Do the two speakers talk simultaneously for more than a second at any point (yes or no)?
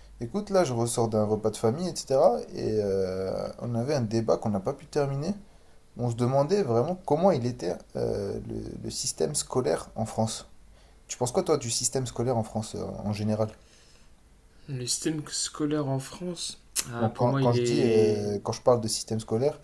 yes